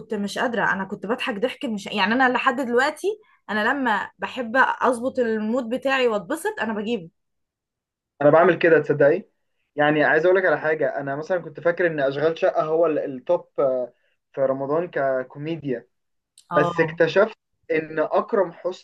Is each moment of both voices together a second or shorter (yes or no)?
yes